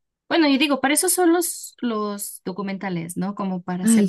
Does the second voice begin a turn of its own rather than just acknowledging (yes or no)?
no